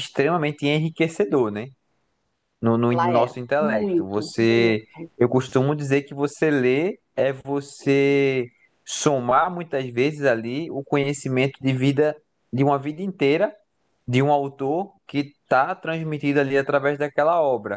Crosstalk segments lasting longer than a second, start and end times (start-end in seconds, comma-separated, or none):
2.9-4.8